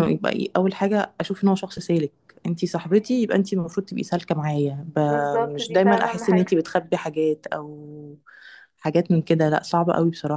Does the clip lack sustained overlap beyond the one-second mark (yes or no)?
no